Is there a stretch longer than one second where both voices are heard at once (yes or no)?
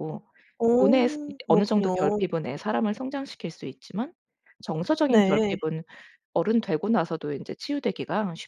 yes